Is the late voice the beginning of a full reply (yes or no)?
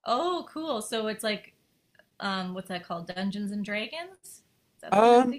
yes